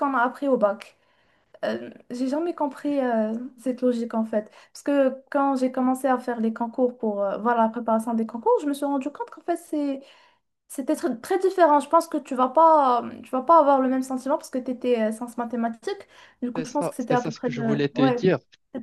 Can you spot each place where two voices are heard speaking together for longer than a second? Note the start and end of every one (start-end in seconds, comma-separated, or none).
16.6-18.2